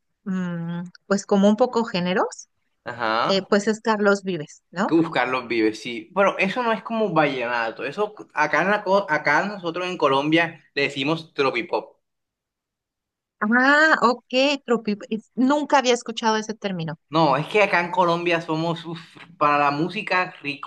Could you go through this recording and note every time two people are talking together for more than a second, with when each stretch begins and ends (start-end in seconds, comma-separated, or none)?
none